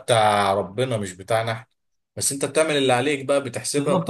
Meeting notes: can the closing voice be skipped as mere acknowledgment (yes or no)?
no